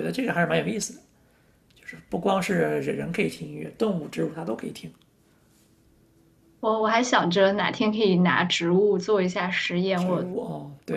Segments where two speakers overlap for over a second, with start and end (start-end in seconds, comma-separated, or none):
none